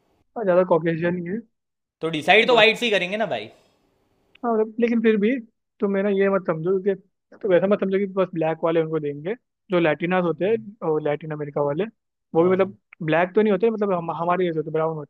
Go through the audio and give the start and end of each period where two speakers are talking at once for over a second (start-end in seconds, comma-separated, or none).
none